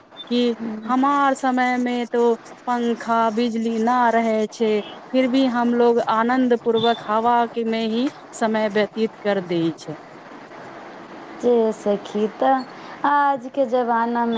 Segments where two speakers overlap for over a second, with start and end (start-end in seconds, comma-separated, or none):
none